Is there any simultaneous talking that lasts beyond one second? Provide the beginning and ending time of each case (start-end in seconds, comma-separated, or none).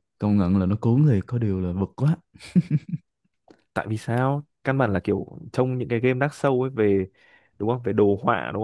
none